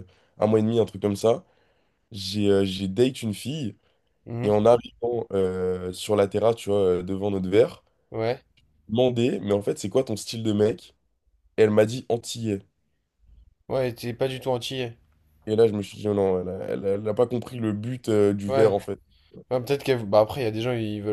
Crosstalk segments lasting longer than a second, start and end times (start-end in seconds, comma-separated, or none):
none